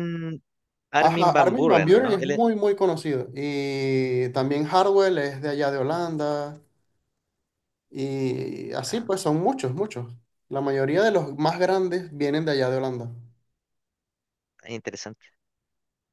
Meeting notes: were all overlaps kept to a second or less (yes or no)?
no